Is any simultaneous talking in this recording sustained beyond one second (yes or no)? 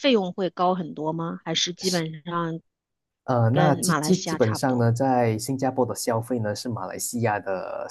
yes